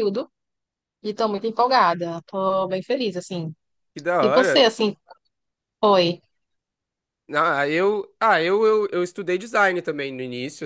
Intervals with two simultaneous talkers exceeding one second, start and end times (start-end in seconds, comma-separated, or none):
none